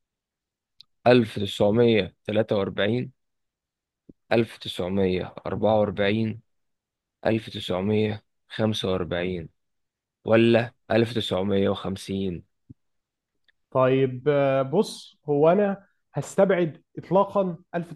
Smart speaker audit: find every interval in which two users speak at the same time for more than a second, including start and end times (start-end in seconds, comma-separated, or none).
none